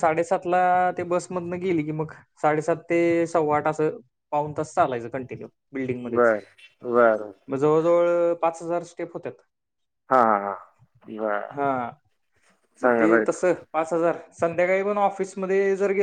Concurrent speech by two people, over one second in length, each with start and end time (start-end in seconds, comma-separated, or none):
none